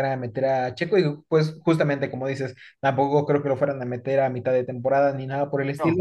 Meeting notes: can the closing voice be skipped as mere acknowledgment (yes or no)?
yes